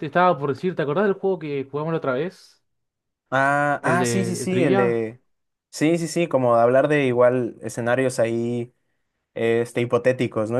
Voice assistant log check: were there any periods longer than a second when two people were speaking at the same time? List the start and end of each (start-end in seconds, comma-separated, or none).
3.8-5.0